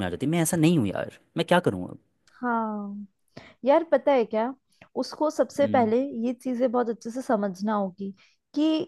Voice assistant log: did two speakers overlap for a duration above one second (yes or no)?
no